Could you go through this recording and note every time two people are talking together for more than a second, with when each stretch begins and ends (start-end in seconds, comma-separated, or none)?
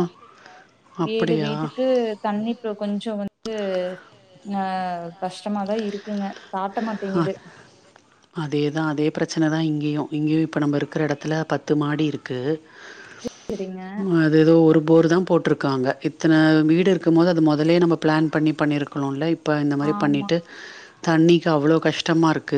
none